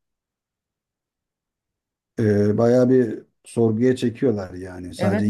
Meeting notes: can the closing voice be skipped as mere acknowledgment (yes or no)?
no